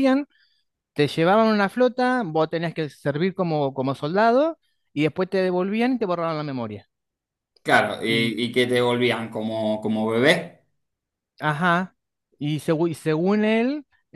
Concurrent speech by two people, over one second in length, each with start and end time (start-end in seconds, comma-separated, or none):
none